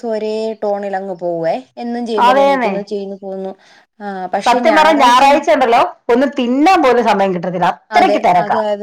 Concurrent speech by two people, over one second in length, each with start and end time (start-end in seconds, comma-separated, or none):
none